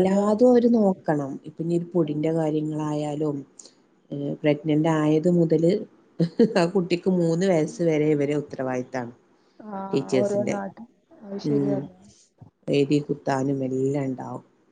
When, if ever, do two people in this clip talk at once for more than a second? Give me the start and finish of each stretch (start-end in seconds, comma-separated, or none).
none